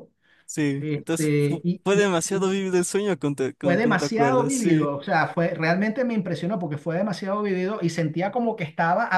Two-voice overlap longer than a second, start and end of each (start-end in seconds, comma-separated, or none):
0.8-2.5, 3.6-4.9